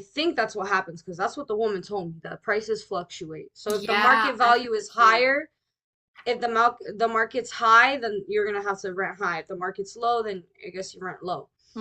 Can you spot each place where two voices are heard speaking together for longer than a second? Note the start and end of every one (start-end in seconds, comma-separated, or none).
3.7-5.3